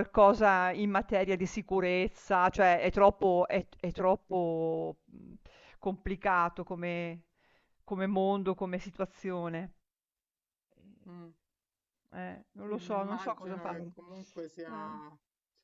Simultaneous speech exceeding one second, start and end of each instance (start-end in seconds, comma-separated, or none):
12.6-13.9